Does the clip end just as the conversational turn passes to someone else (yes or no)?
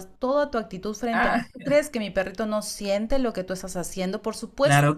yes